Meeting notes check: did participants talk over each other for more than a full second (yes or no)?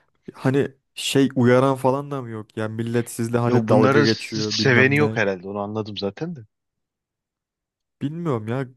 yes